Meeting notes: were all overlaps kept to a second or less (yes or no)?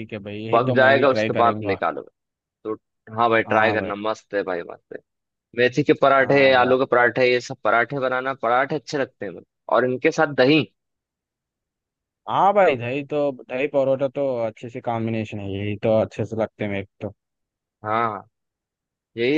no